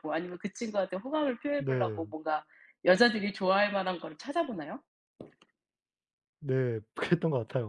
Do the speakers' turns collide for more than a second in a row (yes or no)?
no